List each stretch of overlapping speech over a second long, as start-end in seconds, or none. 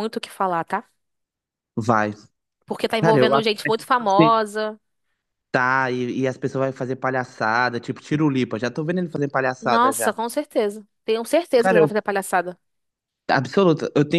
3.0-4.4